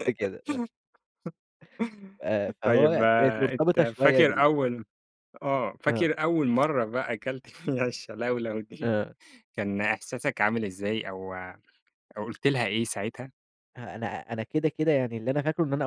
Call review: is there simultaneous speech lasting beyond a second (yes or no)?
yes